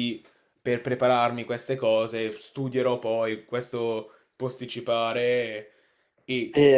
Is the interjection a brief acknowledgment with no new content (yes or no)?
no